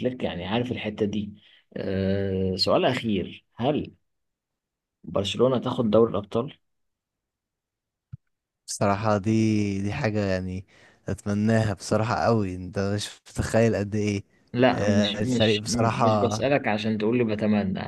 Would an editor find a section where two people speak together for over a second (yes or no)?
yes